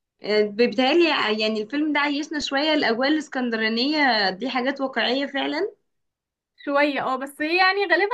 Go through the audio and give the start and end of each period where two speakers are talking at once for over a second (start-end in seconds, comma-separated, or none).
none